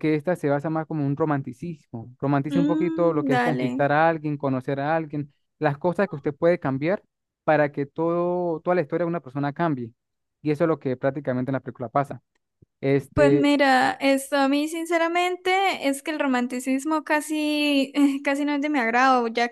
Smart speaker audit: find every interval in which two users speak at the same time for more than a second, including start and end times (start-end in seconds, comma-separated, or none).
2.5-3.8